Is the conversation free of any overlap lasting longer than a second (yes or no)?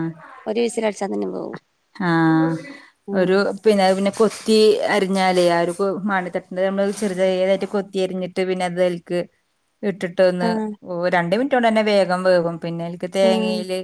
yes